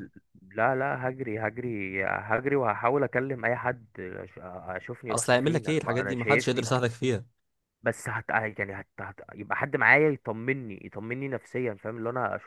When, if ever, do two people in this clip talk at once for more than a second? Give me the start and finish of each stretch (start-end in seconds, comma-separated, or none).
5.1-6.7